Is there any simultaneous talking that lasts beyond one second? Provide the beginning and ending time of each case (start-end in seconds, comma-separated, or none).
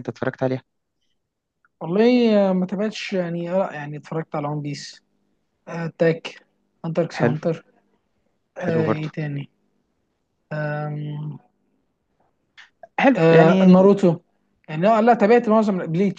none